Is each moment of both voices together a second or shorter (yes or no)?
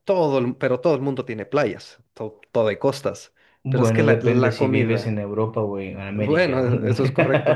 no